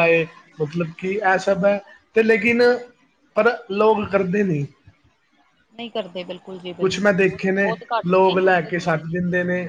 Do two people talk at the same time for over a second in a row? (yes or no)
yes